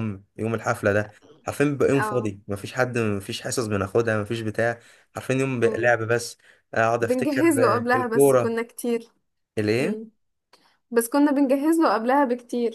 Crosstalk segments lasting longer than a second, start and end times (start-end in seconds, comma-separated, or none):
7.0-8.6